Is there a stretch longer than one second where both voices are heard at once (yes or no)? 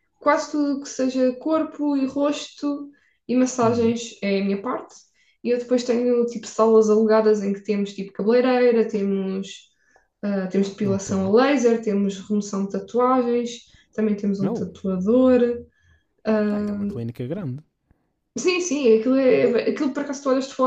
no